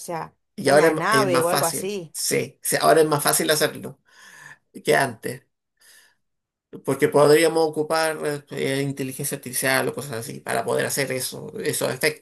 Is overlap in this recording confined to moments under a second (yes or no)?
no